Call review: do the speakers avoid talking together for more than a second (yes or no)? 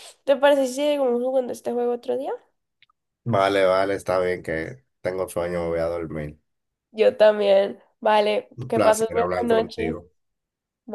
no